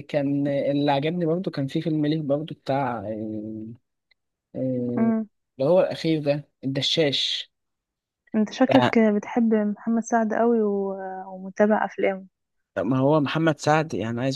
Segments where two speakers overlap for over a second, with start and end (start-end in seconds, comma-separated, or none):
none